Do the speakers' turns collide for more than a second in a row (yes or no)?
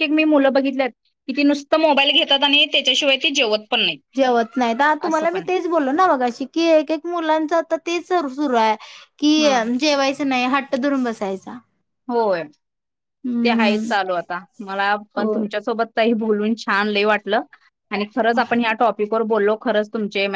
no